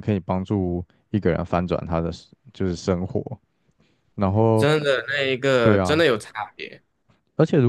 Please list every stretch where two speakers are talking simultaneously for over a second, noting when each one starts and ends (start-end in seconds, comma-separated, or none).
none